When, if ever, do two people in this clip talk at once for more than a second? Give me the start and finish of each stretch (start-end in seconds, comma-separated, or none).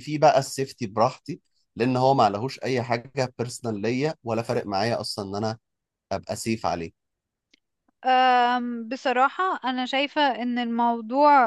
none